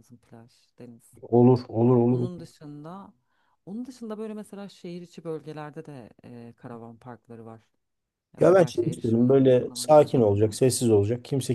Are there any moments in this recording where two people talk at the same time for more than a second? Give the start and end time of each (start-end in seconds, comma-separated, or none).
8.4-10.3